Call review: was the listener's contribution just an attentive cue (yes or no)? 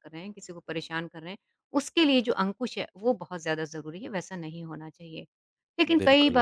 yes